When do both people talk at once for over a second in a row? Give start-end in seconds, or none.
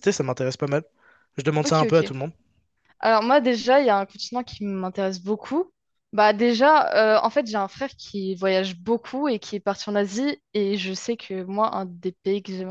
none